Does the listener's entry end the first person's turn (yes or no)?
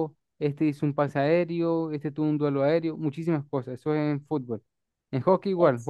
no